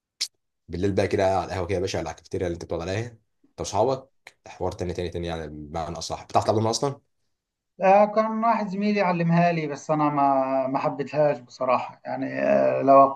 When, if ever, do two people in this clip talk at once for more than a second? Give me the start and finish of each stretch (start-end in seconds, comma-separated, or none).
none